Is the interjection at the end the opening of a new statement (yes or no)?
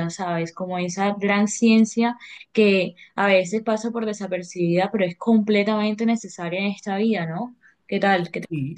yes